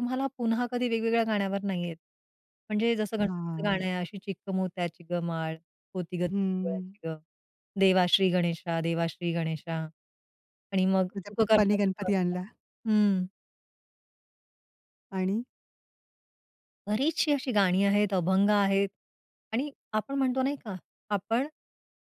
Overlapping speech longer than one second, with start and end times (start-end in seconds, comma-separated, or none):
11.1-12.4